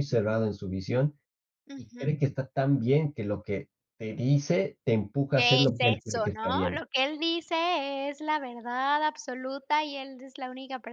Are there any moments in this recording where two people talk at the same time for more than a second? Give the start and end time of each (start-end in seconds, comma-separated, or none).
5.3-6.8